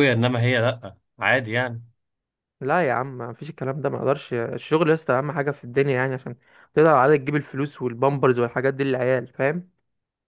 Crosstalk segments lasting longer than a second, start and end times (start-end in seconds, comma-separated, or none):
none